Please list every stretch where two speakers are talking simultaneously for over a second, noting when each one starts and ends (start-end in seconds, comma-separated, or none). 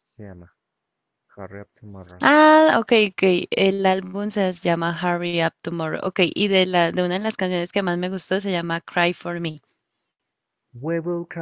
none